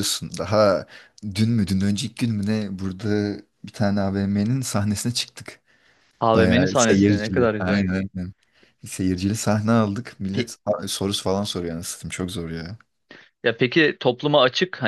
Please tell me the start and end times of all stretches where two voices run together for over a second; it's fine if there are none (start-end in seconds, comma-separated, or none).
6.3-7.9